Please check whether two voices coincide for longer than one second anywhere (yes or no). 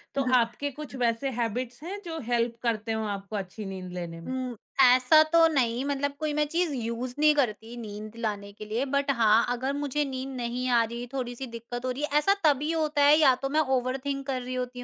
no